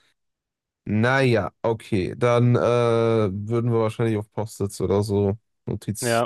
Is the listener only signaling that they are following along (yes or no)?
yes